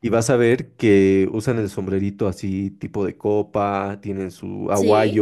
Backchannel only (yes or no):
yes